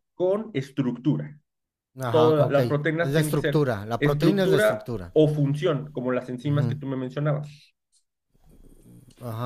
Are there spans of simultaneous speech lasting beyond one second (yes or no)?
yes